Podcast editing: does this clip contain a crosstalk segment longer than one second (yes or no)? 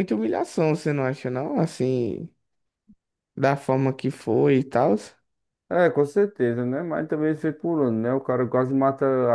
no